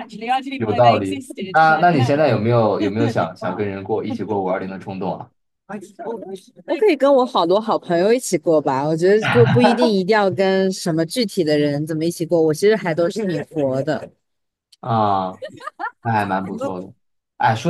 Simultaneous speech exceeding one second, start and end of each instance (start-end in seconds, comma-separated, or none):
0.6-2.1